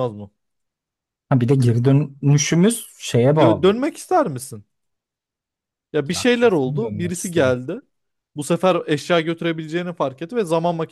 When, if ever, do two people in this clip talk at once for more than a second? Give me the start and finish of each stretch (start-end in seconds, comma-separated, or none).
6.1-7.6